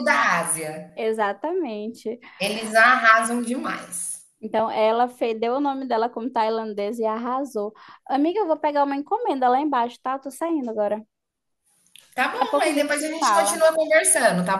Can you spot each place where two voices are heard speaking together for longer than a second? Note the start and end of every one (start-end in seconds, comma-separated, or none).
12.3-13.6